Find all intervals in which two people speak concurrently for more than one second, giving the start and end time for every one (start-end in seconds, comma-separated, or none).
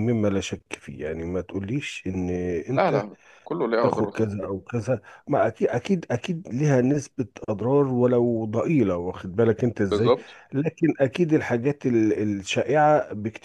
none